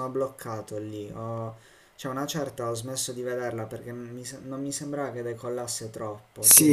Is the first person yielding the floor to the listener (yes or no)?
yes